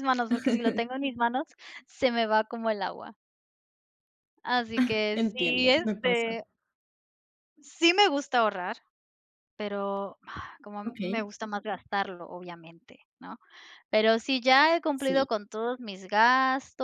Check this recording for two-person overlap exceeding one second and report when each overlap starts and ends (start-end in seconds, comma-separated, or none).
5.1-6.4